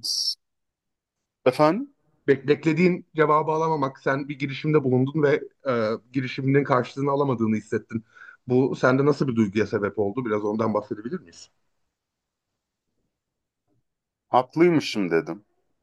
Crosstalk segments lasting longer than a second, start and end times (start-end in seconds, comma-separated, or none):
none